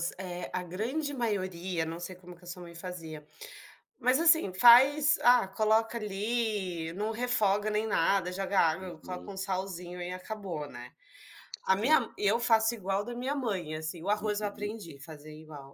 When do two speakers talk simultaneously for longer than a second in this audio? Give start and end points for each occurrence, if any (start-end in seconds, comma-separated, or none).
none